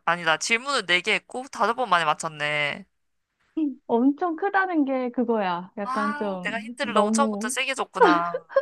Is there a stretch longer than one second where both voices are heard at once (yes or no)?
yes